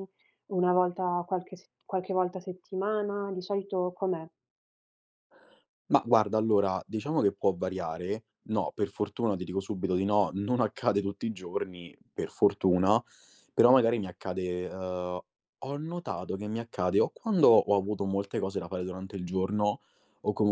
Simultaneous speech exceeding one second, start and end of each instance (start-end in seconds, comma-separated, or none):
none